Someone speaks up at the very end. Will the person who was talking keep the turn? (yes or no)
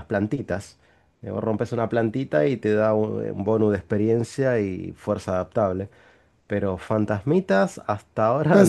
no